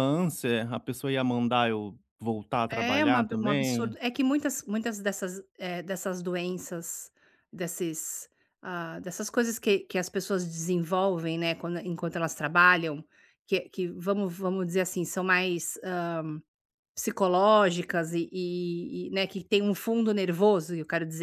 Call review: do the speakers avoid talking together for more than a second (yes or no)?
no